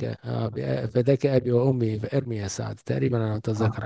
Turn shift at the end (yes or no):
yes